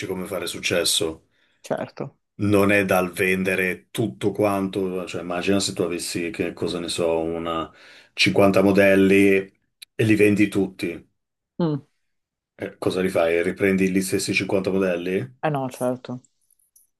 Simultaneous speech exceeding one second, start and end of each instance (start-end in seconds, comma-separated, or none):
none